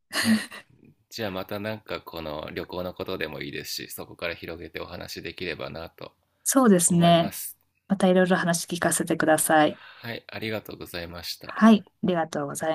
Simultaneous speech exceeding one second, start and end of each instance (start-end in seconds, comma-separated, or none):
none